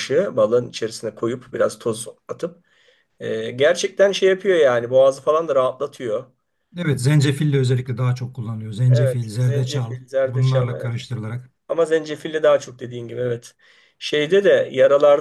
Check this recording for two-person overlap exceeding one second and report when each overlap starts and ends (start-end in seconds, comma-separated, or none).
8.9-11.1